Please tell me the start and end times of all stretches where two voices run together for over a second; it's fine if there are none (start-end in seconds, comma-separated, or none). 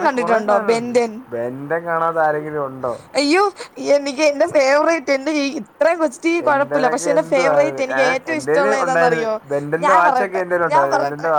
6.5-9.2